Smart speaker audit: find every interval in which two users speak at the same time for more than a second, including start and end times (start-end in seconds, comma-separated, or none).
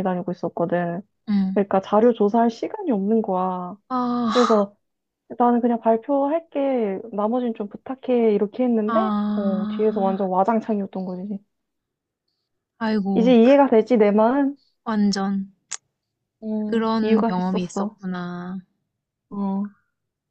8.8-10.2, 16.7-18.0